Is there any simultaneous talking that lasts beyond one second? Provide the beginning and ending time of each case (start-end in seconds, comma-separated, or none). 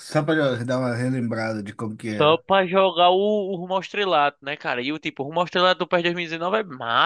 none